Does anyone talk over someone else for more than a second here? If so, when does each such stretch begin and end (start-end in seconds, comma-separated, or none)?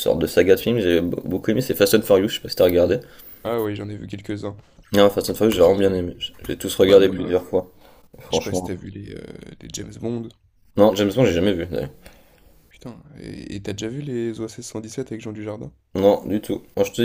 none